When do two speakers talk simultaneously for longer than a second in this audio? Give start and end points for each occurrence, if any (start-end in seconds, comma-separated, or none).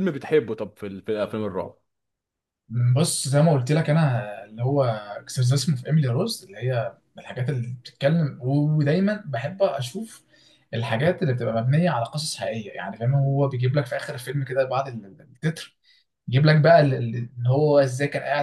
none